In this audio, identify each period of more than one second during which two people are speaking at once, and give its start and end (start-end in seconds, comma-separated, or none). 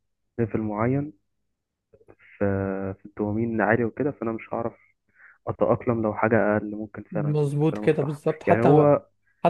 7.1-8.8